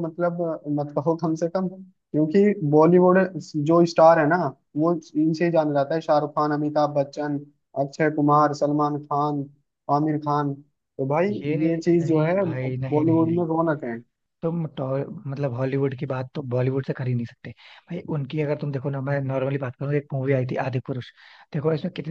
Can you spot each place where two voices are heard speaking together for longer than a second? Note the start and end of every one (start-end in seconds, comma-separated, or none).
12.0-13.4